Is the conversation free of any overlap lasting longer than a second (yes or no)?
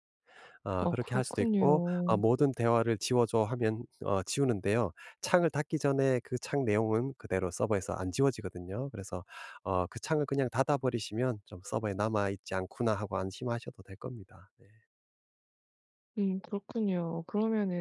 no